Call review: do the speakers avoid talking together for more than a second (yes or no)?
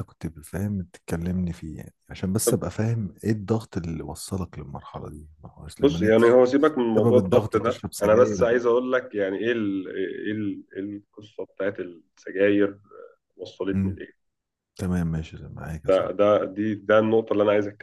no